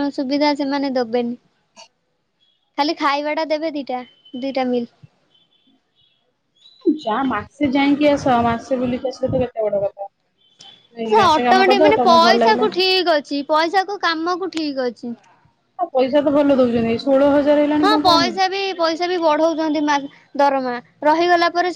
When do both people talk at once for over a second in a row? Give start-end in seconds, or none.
11.1-12.7